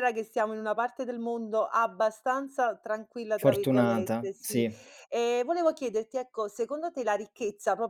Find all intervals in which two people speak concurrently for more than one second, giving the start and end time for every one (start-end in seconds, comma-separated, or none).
3.4-4.6